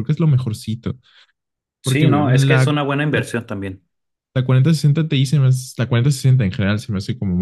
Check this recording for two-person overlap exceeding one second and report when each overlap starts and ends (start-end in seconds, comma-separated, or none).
1.8-3.3